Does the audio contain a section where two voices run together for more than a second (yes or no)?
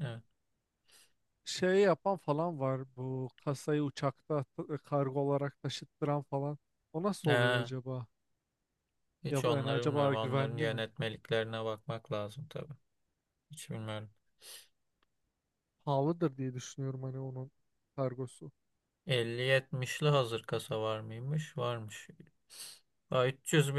yes